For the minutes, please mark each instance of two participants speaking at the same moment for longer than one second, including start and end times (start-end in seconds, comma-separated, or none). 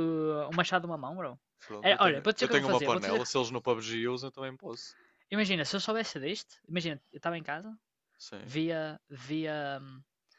1.8-3.5